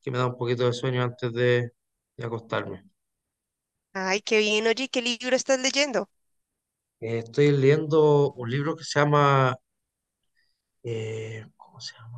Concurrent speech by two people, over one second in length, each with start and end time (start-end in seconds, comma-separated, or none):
none